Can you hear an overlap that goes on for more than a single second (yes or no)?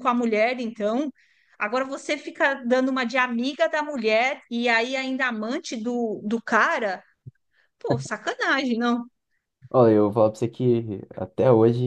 no